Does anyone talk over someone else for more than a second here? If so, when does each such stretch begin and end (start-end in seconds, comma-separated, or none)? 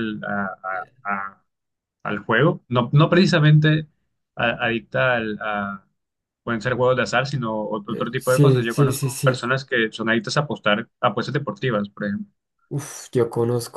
7.9-9.5